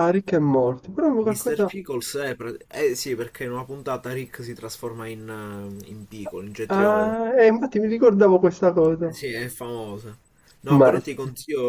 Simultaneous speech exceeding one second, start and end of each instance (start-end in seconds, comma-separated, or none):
none